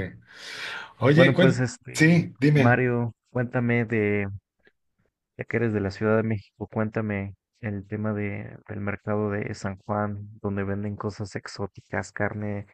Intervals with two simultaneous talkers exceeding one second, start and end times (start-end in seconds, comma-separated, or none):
1.1-2.8